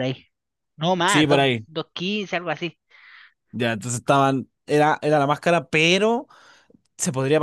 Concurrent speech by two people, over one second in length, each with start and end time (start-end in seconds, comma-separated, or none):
none